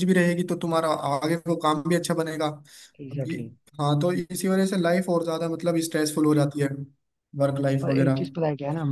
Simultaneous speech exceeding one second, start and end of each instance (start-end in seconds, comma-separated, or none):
none